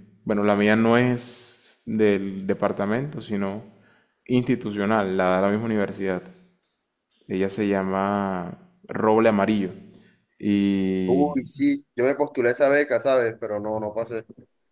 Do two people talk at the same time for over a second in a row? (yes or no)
no